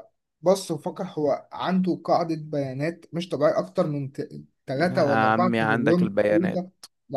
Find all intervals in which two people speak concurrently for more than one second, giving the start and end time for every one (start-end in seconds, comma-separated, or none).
4.8-6.6